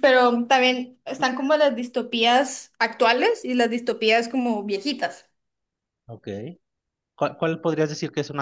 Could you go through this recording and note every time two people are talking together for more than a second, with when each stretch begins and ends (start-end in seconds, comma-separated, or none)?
none